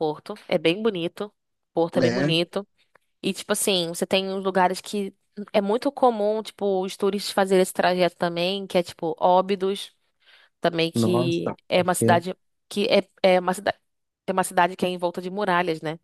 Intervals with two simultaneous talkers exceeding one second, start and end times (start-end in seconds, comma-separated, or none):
10.9-12.2